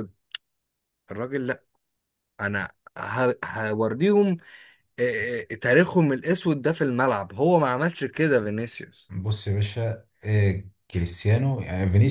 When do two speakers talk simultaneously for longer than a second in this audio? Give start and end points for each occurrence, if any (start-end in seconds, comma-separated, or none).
none